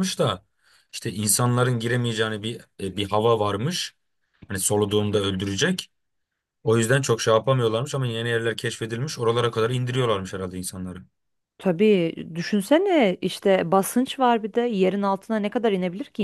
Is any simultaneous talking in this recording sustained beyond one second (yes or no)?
no